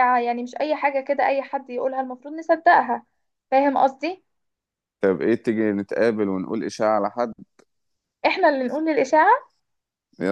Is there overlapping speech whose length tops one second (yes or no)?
no